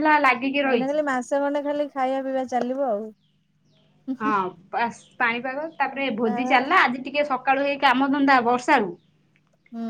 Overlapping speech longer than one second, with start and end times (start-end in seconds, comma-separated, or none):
none